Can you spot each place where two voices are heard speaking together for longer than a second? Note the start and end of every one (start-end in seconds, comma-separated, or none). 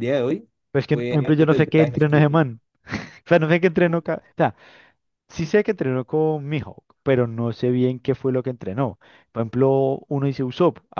0.9-2.4